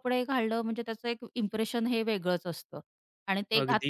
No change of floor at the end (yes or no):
yes